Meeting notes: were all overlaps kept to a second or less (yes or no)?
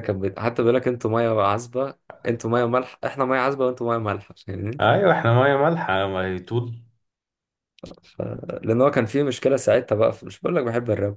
yes